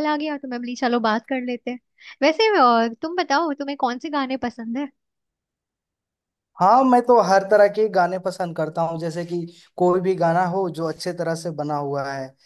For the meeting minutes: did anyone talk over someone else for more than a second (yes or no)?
no